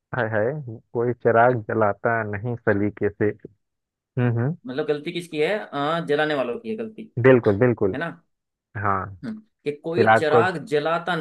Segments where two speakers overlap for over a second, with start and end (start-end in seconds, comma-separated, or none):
none